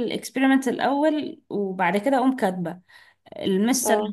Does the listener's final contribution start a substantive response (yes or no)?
no